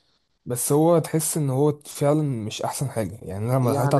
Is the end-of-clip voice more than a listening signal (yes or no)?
no